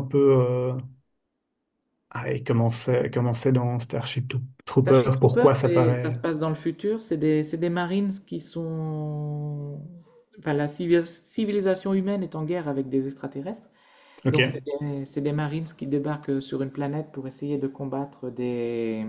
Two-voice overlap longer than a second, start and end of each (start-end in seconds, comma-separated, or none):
4.8-6.2